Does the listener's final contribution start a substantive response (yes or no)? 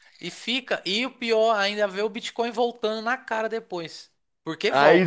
yes